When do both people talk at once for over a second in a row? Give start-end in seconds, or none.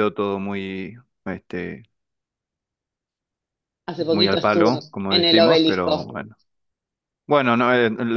4.1-6.1